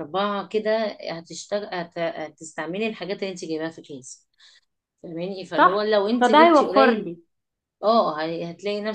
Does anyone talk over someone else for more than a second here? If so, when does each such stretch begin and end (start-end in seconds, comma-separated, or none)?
5.6-7.1